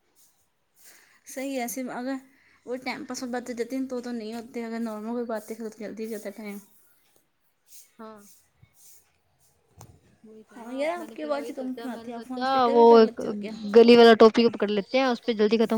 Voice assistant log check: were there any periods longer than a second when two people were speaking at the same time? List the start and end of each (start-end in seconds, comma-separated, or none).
10.5-12.8